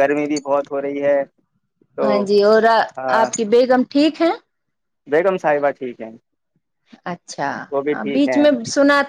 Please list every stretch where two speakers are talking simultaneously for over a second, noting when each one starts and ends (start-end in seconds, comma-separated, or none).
none